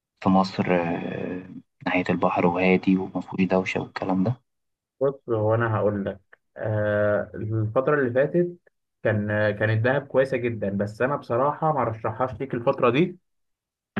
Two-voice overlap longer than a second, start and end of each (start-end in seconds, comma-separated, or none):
none